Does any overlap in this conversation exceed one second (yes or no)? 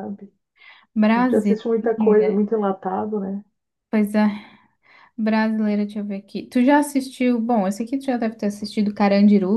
yes